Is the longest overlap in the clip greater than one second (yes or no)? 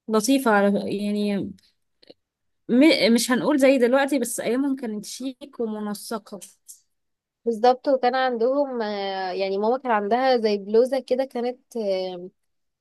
no